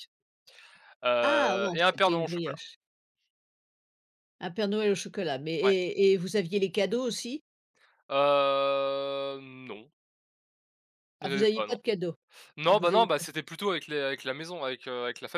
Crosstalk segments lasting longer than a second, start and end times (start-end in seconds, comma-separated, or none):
1.2-2.6